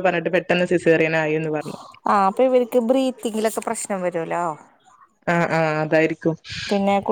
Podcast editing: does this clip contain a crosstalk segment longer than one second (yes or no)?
no